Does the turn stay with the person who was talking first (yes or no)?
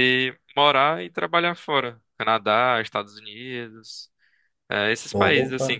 yes